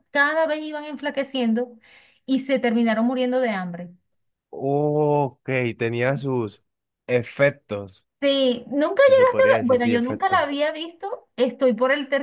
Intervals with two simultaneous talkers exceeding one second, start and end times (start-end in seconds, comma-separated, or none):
9.0-10.4